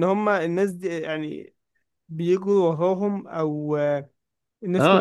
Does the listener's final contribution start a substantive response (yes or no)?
yes